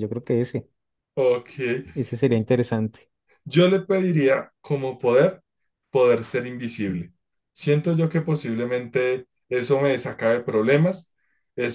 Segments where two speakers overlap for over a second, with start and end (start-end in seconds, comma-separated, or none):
none